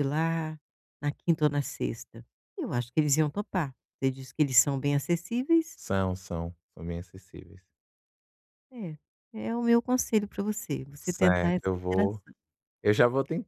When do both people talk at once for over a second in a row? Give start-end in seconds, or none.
11.0-12.2